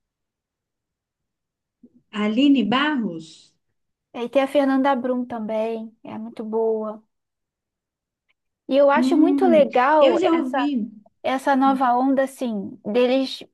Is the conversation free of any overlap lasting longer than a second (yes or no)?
no